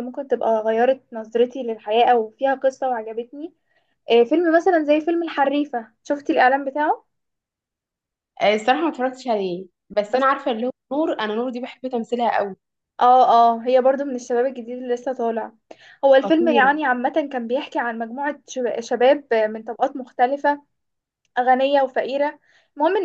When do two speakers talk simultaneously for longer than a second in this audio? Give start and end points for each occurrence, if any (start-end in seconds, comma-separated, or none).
none